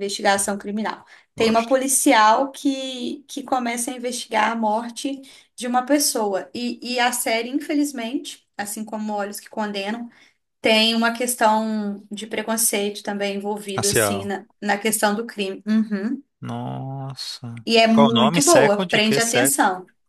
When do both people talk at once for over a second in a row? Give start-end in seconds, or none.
17.9-19.5